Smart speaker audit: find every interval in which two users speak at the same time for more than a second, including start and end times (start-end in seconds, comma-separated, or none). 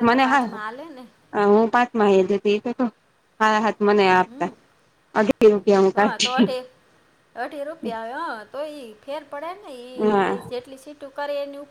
none